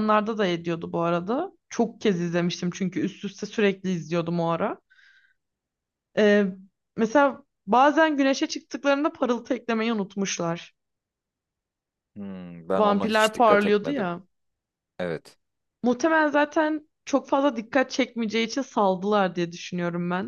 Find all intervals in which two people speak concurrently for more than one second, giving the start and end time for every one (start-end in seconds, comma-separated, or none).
12.8-14.1